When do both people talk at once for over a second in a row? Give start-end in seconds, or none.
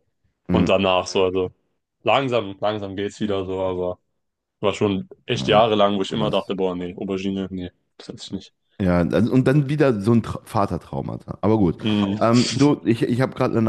5.3-6.5